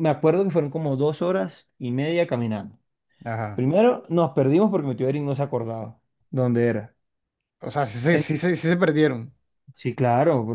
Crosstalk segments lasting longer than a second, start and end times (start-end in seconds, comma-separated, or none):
none